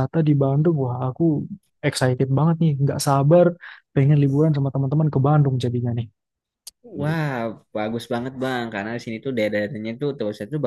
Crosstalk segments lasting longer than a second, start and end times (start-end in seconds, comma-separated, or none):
none